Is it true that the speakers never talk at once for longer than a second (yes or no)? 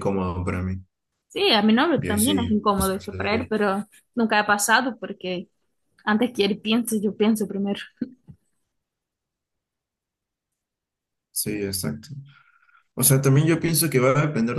no